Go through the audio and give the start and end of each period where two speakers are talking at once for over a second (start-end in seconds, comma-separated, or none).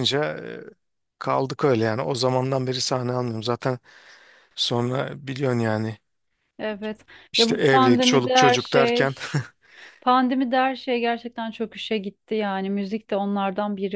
7.3-9.1